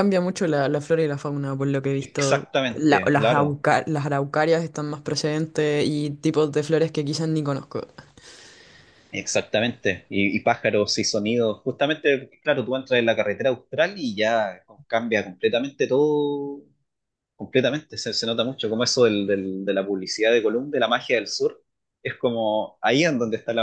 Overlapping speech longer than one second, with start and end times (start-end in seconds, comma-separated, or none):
2.0-3.6